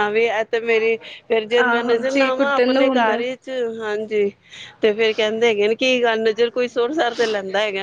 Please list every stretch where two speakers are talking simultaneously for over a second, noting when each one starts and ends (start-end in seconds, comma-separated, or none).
1.6-3.2